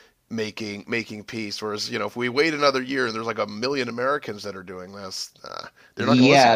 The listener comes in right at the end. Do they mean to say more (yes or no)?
yes